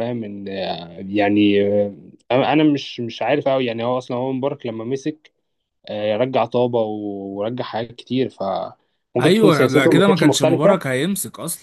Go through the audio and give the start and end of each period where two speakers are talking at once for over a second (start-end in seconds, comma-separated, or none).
9.2-10.8